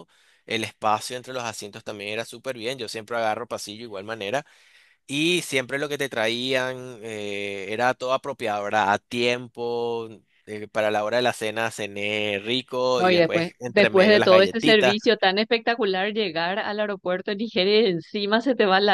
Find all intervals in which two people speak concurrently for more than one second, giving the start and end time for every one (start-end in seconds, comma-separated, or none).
13.0-15.0